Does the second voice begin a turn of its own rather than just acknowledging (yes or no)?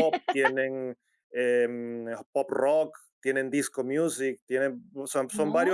no